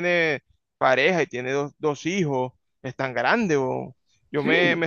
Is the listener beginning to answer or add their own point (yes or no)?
no